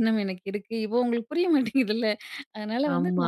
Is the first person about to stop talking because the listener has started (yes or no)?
no